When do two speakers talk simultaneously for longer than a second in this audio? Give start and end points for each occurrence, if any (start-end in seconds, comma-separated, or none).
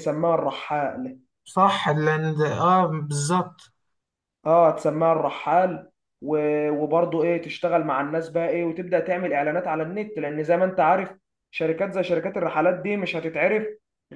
none